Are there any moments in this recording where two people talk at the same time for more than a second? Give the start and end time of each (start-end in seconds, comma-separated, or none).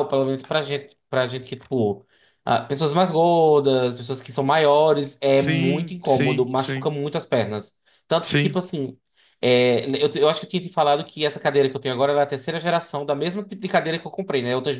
5.3-6.9